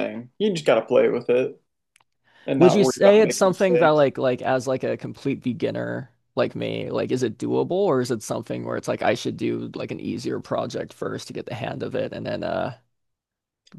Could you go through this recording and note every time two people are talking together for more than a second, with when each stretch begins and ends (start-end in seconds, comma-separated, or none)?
2.6-4.1